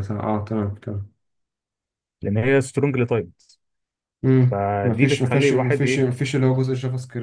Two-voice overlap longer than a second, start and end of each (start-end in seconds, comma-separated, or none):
4.5-6.1